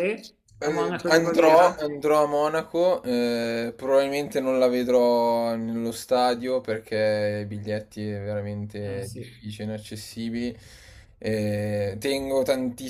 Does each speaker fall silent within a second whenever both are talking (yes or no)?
no